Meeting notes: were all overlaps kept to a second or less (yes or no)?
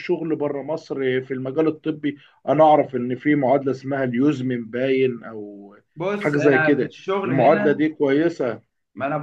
no